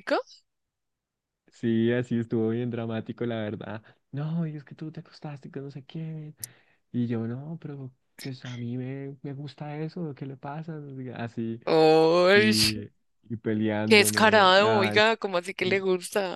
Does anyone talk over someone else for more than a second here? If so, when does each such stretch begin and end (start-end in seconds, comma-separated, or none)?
13.8-15.2